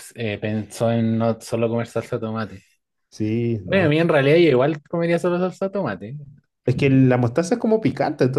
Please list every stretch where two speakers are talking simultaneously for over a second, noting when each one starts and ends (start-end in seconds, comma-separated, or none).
none